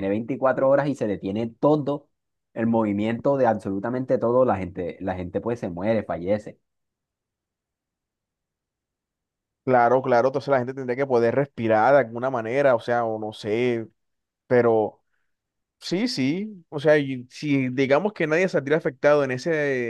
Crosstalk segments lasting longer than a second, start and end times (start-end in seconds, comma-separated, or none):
none